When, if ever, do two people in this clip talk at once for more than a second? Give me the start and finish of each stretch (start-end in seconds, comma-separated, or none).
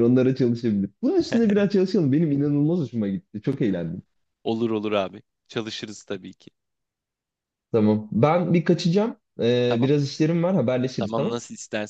none